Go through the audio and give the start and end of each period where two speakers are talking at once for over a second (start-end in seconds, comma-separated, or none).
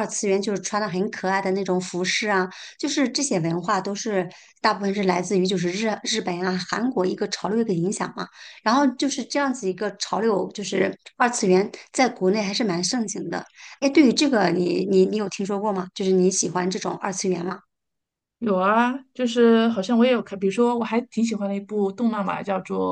none